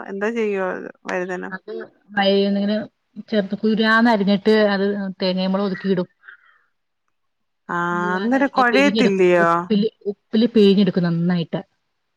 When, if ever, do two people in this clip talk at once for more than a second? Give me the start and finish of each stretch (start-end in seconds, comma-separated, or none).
8.2-9.5